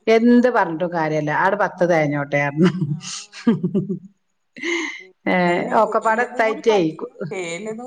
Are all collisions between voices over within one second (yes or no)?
yes